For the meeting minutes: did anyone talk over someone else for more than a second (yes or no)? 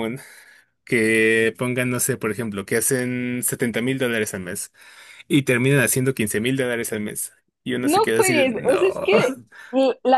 yes